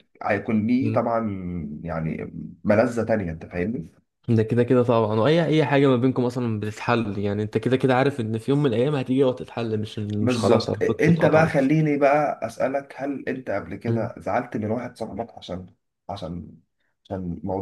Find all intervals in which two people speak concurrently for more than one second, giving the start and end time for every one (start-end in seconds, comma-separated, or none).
10.2-11.6